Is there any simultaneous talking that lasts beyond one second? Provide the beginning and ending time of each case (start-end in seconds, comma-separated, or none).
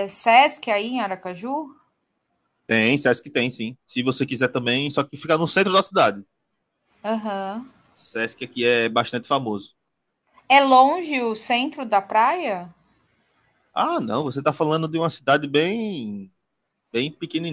none